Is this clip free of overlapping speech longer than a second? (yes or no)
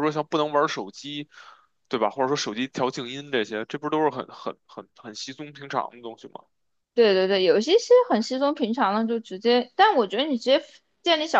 yes